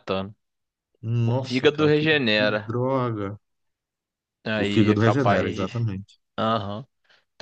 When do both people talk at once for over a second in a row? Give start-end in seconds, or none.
1.2-2.8, 4.6-5.9